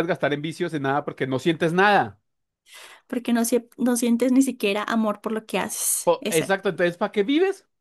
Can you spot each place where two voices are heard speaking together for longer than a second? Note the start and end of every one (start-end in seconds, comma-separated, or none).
none